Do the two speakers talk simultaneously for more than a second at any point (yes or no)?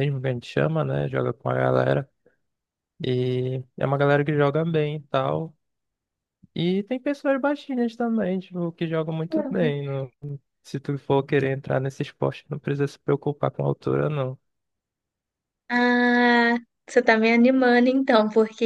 no